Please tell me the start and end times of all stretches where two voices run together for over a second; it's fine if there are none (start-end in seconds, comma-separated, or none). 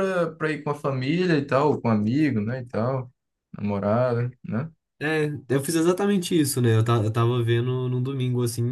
none